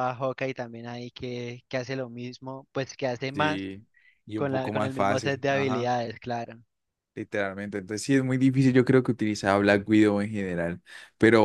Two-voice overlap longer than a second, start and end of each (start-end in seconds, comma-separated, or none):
4.4-5.9